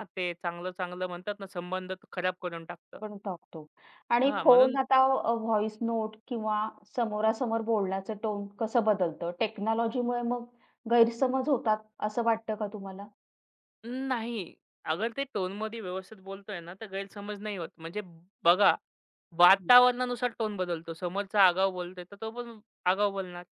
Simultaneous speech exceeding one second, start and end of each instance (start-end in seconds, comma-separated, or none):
none